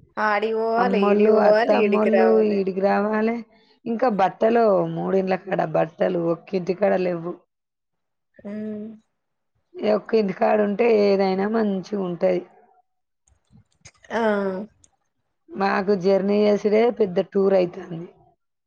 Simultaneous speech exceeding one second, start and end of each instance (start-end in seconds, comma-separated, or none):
0.8-2.6